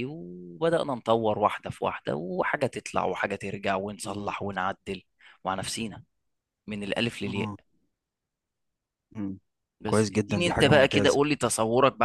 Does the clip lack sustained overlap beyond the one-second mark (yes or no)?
no